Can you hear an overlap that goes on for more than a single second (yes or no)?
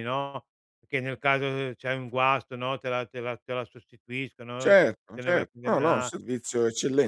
yes